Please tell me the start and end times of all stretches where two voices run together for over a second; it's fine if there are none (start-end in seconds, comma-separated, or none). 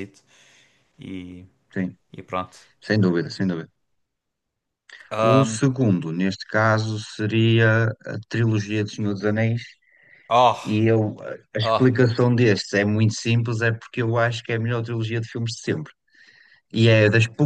none